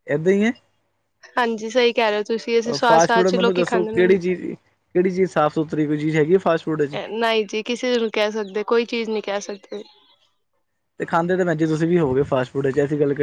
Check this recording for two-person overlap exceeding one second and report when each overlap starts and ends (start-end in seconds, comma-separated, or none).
2.9-4.2